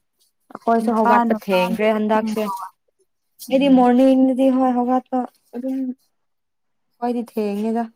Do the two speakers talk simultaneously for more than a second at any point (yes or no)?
yes